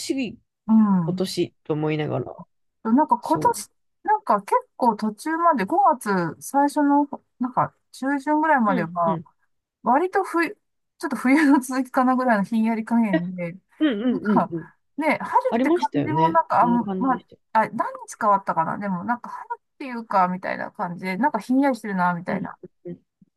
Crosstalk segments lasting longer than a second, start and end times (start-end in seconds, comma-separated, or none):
15.5-17.4